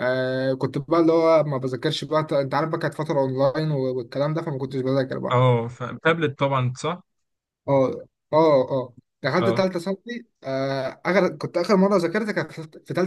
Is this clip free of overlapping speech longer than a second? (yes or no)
yes